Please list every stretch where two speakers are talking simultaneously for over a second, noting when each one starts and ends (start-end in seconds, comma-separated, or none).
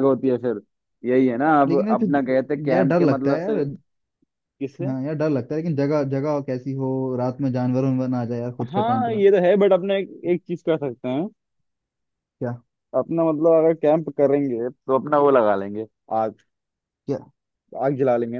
1.7-3.5